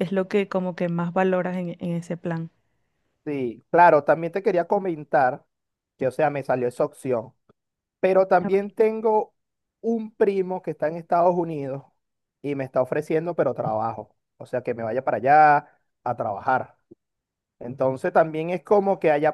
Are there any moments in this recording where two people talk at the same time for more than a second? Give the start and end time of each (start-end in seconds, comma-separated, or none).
none